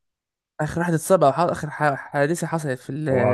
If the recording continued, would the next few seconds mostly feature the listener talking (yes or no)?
yes